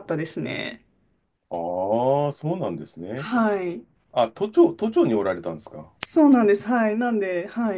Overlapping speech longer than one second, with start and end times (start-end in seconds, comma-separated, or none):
none